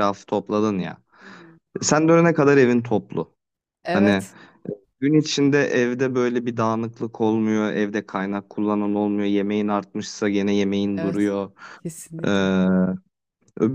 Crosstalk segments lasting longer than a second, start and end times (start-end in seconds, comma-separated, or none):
none